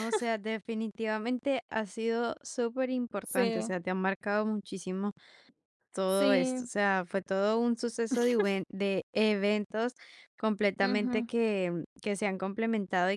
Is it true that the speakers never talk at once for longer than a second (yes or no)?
yes